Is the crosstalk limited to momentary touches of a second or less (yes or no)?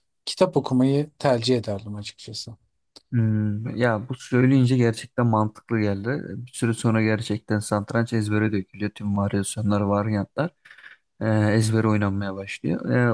yes